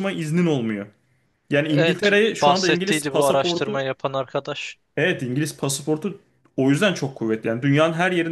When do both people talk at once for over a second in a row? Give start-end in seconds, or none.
1.7-3.8